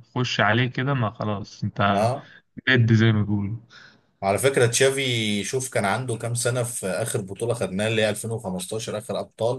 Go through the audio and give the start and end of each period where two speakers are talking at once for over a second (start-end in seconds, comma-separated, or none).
none